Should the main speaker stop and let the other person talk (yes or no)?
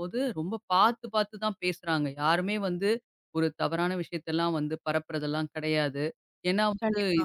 no